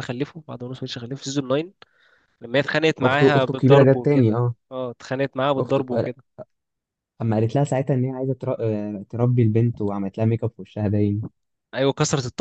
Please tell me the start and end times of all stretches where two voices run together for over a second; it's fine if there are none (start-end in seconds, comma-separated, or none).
3.1-4.5